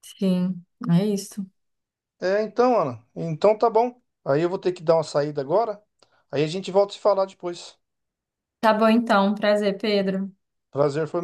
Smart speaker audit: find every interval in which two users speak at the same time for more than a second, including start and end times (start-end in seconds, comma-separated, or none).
none